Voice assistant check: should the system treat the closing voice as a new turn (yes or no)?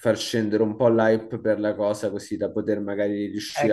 yes